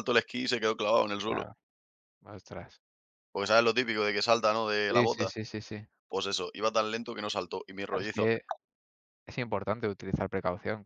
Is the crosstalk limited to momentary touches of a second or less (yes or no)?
yes